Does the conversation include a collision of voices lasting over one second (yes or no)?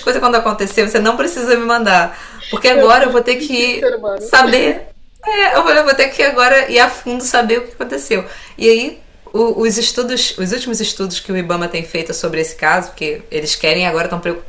yes